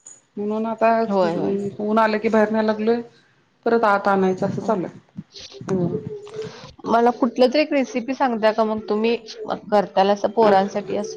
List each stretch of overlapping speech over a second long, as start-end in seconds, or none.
none